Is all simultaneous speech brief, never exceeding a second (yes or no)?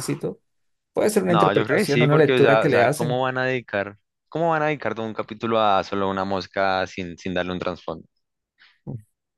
no